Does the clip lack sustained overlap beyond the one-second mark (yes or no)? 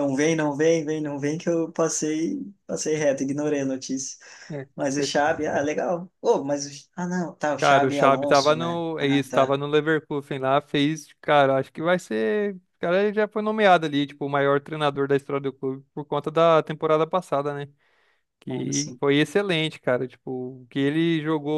no